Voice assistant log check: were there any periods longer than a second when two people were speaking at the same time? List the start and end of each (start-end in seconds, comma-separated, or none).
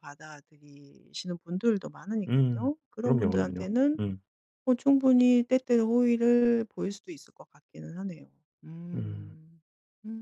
2.3-4.0